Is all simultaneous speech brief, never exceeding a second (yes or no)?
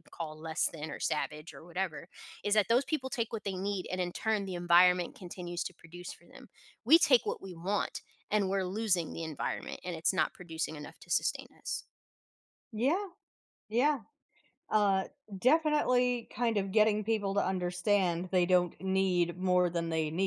yes